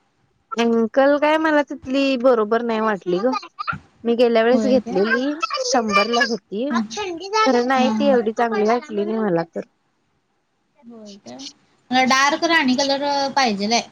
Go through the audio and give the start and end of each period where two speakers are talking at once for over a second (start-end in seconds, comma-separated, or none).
none